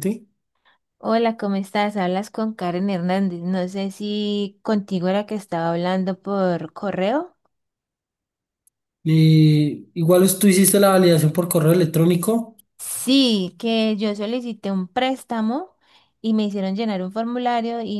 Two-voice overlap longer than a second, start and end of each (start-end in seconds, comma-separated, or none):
none